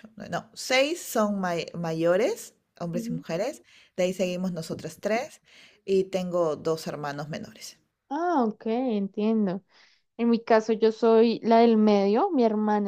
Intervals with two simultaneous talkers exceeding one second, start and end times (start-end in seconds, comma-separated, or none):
none